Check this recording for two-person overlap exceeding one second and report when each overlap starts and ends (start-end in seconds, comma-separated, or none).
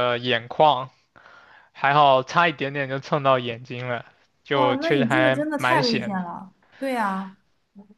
4.5-6.2